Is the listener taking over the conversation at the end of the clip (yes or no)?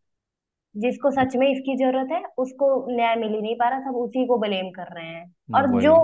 no